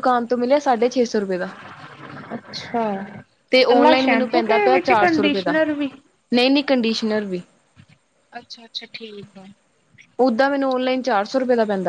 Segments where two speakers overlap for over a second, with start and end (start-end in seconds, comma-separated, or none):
3.7-5.5